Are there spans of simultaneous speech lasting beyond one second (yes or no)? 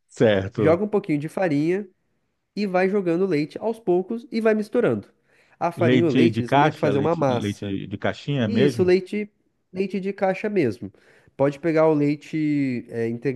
yes